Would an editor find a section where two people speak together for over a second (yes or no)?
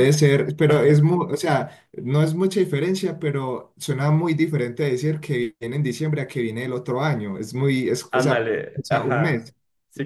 yes